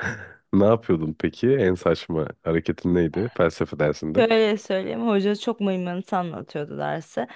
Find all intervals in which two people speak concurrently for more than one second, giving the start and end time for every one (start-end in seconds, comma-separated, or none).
none